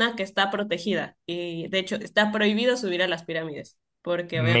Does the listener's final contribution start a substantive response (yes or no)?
no